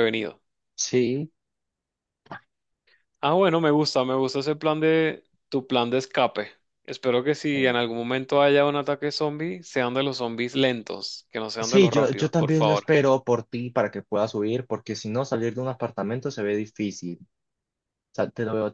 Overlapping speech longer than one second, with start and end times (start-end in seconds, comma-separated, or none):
11.6-12.9